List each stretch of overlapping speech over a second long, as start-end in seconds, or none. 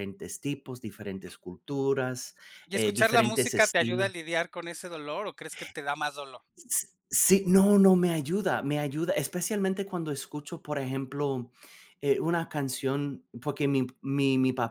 2.7-4.1